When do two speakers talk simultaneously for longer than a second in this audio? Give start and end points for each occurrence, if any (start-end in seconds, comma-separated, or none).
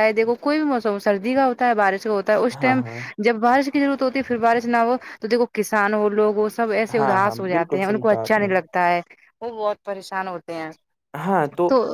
7.0-8.5